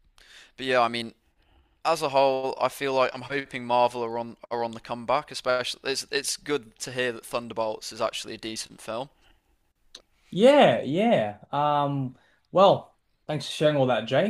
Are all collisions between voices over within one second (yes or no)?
yes